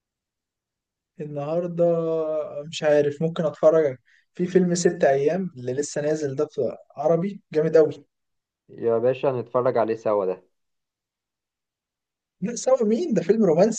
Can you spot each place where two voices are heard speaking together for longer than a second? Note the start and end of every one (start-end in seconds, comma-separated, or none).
none